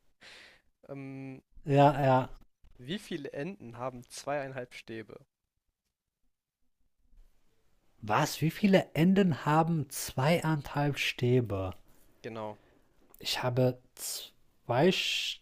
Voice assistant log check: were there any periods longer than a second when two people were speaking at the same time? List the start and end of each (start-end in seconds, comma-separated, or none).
none